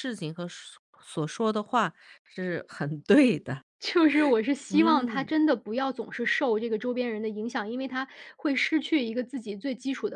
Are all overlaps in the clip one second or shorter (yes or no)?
yes